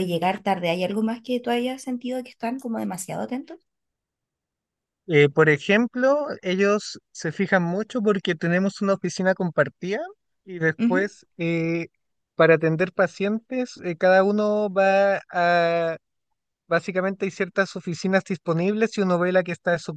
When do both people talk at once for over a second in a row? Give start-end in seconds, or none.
none